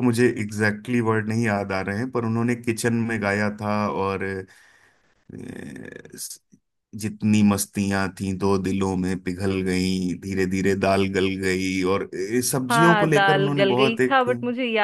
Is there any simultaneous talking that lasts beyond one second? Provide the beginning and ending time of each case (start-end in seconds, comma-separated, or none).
12.7-14.2